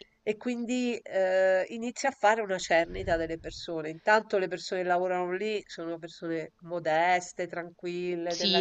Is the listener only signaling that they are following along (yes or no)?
no